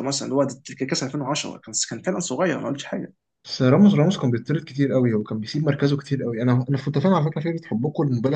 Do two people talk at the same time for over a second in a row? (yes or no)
no